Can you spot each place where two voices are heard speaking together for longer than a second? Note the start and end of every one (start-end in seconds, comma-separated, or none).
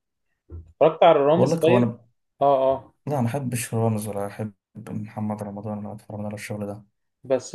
none